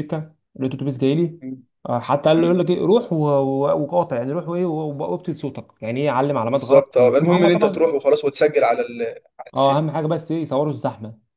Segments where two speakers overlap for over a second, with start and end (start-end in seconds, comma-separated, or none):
6.5-7.9